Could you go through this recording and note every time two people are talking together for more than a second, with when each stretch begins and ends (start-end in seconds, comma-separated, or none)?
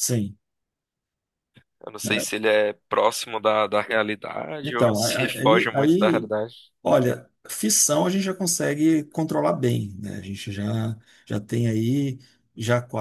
4.6-6.3